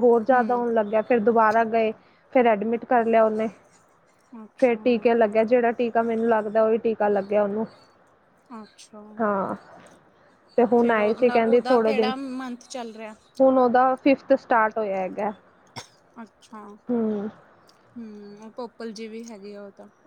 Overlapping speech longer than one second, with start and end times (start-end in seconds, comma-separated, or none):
10.8-12.1